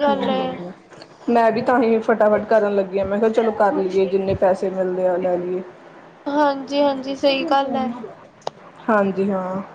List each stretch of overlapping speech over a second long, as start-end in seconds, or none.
none